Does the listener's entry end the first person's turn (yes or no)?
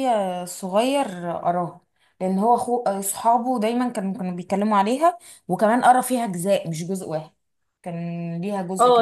yes